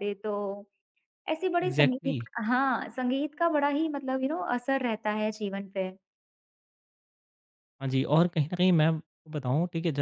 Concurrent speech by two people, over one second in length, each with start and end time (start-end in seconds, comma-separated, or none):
none